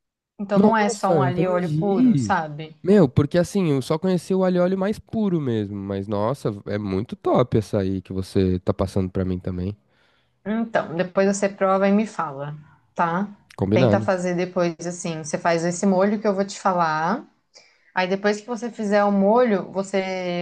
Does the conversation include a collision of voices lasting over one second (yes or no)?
yes